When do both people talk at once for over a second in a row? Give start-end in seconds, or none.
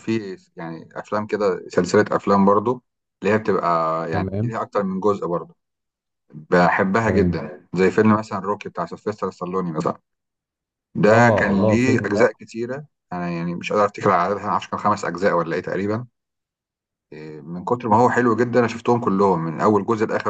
11.0-12.4